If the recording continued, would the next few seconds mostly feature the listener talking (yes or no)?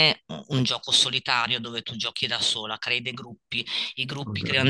no